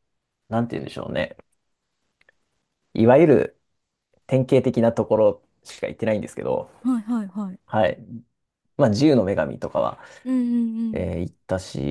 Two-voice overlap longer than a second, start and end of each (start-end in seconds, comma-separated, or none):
none